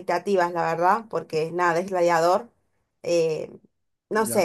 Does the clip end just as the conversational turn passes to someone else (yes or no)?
no